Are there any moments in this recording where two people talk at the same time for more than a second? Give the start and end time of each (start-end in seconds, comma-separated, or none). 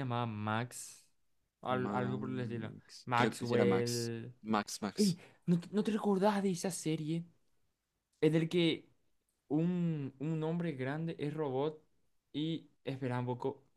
1.7-4.3